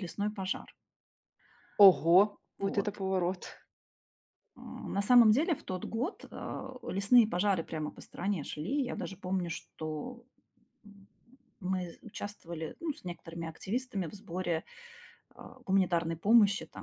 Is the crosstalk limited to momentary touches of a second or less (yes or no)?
yes